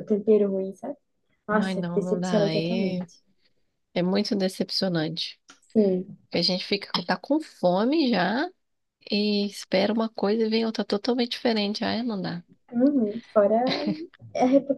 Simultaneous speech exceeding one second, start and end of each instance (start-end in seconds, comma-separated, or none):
1.5-3.0